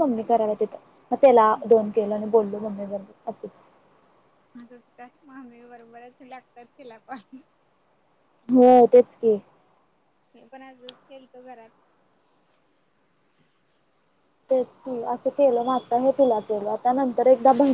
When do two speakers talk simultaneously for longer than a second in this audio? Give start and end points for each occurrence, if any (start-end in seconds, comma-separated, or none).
none